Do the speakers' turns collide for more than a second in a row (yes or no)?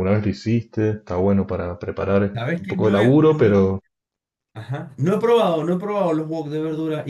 yes